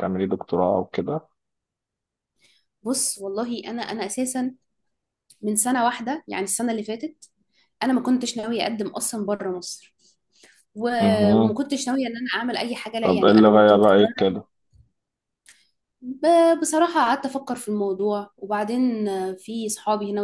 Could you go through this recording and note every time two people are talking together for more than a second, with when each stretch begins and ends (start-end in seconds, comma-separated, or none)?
13.0-14.3